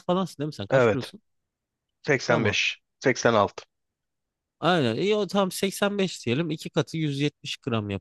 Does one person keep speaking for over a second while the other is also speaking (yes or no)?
no